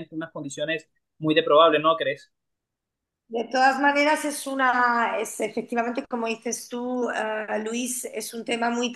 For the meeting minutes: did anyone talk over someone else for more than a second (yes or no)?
no